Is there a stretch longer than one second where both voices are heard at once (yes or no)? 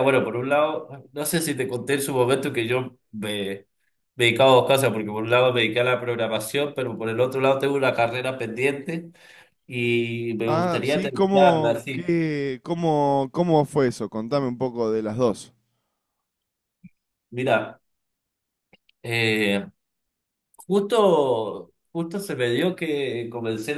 yes